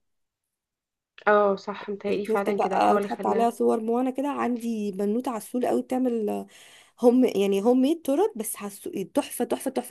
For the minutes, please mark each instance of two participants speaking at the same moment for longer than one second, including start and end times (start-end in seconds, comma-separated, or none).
2.1-3.5